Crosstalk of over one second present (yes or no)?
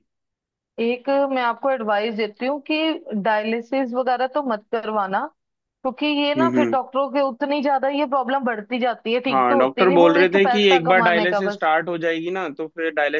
yes